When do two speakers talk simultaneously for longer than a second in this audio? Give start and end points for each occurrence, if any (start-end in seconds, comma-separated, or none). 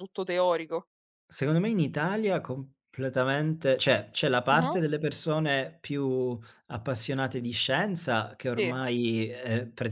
none